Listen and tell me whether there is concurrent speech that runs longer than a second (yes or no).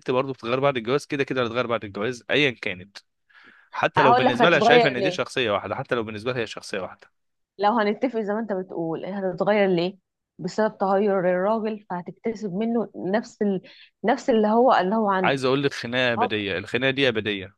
yes